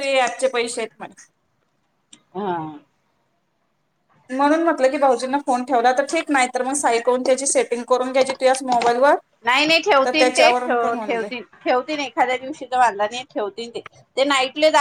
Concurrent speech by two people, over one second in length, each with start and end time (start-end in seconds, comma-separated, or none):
none